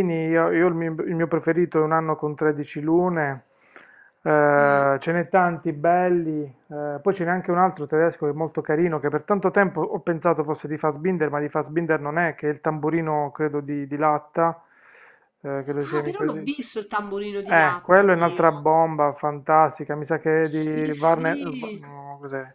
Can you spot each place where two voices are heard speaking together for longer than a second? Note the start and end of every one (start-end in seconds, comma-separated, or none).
17.4-18.6, 20.4-21.8